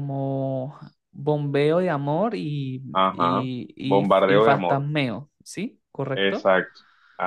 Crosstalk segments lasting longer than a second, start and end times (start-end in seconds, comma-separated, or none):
2.9-4.8